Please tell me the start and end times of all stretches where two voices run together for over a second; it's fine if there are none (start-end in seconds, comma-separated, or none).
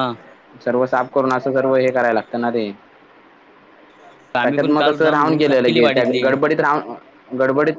4.4-6.2